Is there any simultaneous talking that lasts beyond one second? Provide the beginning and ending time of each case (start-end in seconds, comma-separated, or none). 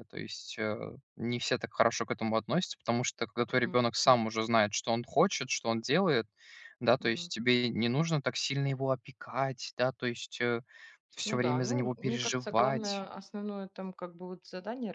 11.2-13.1